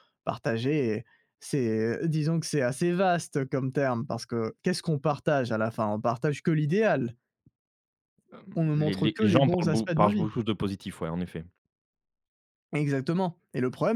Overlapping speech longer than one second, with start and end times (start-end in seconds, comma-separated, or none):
8.8-10.3